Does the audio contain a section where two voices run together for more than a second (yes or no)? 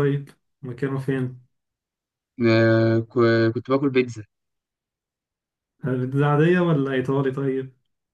no